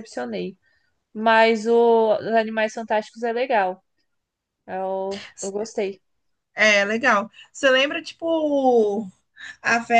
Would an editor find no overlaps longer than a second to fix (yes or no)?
yes